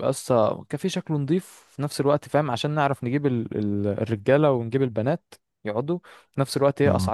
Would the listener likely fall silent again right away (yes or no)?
yes